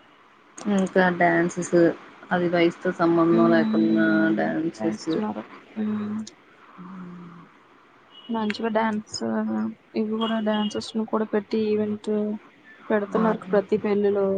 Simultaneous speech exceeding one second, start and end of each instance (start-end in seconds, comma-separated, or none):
3.4-5.1